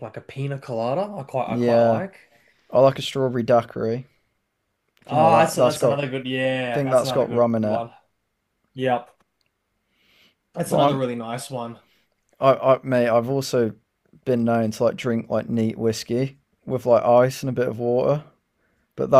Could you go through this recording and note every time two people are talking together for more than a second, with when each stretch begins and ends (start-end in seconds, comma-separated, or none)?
5.0-7.8